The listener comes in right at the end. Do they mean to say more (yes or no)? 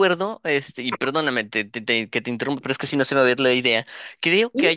no